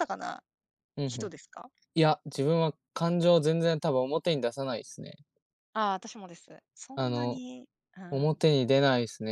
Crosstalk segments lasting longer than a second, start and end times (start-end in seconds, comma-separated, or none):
none